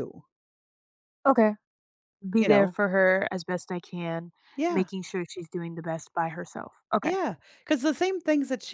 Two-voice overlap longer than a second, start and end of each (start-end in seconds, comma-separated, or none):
none